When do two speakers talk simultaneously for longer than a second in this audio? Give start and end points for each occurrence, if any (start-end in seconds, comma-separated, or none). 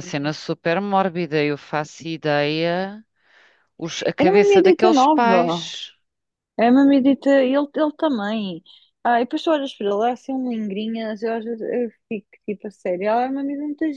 4.2-5.7